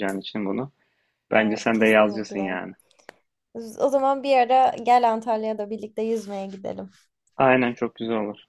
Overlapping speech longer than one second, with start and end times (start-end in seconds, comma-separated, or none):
1.3-2.6